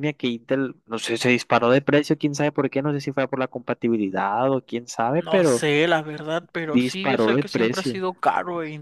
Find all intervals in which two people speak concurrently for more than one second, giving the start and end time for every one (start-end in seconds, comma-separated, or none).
6.7-8.0